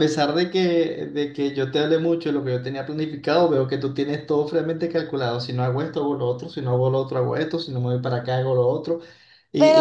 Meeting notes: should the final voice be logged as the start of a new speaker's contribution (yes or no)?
yes